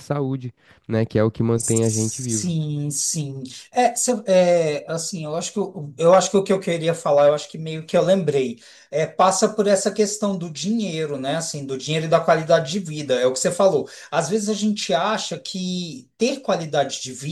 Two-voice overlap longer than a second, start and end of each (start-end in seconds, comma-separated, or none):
none